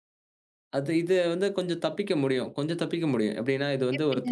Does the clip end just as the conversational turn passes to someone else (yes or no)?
no